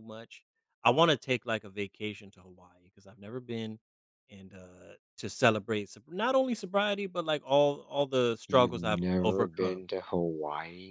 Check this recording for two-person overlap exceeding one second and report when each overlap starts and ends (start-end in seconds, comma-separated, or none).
8.5-9.8